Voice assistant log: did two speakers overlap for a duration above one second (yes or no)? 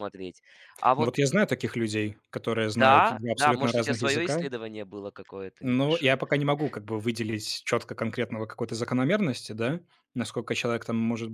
yes